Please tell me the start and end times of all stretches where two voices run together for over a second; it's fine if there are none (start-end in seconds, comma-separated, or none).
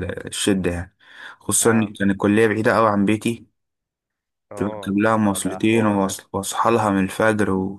4.6-6.1